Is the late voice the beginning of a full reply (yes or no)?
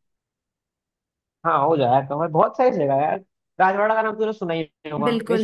yes